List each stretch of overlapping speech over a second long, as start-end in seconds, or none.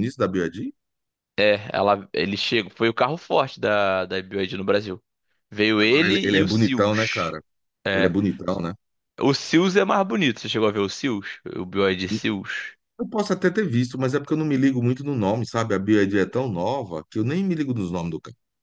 5.8-7.3